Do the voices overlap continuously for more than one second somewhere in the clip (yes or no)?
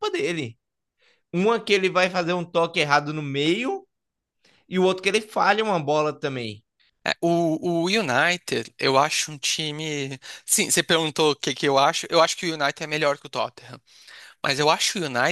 no